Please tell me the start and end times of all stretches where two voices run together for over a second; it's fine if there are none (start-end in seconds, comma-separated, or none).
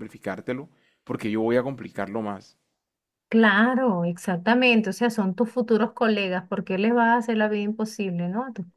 none